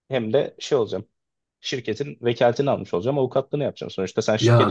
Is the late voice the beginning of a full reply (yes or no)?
no